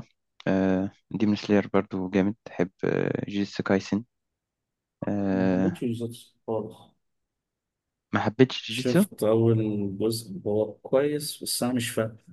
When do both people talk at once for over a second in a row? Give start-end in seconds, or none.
none